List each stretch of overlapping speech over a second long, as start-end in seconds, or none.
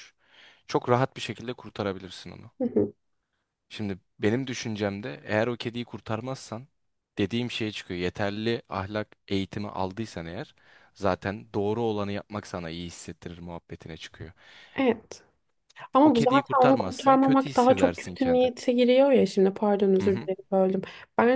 16.0-18.5